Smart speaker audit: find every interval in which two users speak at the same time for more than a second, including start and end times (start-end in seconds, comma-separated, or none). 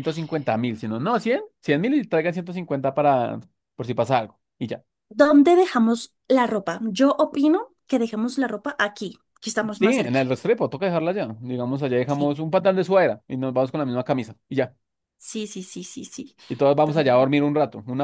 none